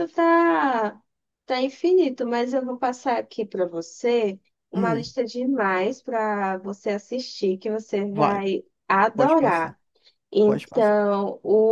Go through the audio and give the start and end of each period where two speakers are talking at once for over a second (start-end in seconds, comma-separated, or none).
none